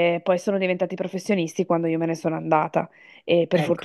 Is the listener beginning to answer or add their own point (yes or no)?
no